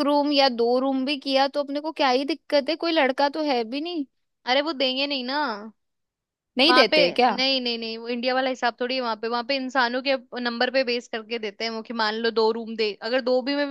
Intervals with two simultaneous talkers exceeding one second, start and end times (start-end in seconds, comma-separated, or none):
none